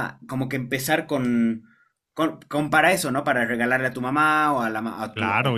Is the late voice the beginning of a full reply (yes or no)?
yes